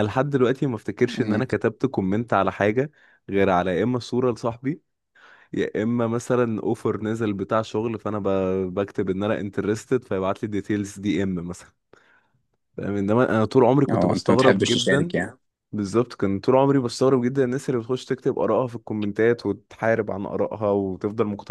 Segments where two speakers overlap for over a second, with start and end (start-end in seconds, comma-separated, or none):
13.9-15.1